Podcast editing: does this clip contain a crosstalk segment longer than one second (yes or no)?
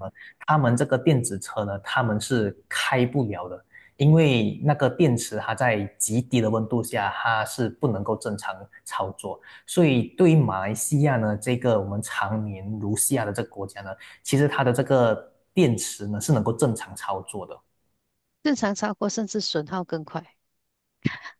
no